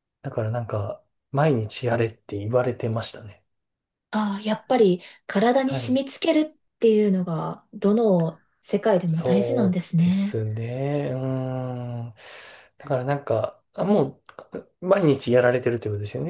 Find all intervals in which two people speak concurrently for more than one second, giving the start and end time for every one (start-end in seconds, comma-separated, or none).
9.1-10.4